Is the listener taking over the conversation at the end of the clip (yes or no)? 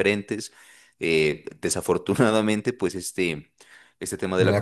no